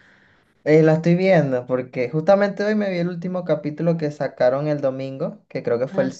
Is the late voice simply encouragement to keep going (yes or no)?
yes